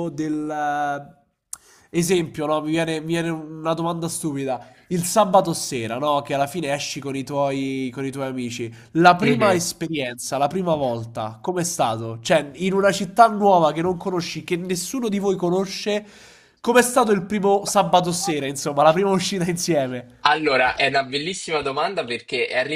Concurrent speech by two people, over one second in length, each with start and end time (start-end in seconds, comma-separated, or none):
none